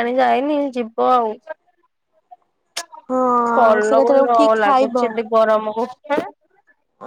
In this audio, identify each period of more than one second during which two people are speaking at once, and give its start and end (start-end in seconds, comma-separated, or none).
3.6-5.0